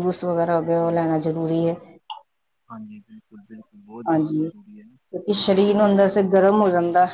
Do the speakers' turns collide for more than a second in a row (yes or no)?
no